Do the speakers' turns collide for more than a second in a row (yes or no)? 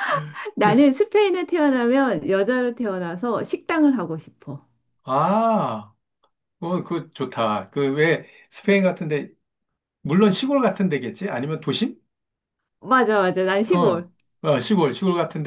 no